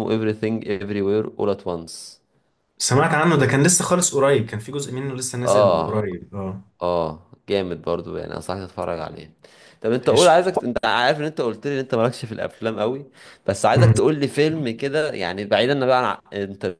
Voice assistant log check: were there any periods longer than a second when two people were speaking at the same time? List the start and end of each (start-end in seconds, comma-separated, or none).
none